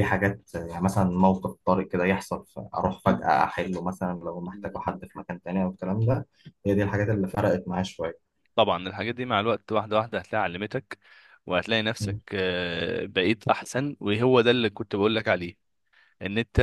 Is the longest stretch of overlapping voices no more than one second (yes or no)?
yes